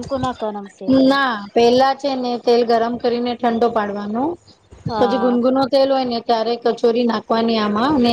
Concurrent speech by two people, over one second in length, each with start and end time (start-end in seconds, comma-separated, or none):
none